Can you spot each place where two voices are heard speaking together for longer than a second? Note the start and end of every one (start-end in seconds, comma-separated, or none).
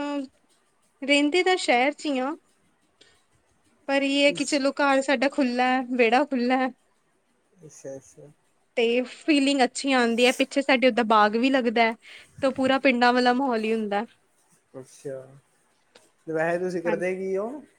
none